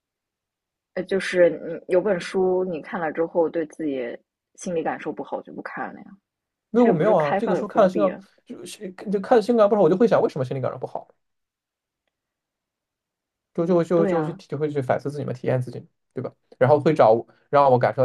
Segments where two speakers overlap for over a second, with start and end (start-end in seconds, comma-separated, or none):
6.8-8.2